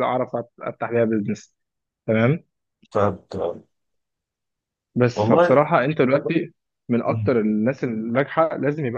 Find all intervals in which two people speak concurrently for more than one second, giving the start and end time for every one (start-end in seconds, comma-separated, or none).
none